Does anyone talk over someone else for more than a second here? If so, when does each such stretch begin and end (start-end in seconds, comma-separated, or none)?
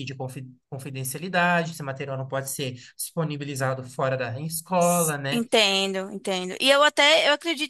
none